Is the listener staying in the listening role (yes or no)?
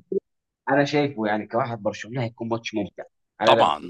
no